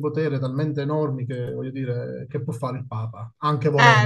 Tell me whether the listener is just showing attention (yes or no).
no